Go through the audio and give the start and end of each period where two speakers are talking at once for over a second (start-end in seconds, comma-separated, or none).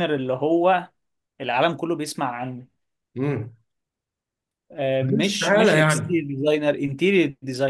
5.0-6.3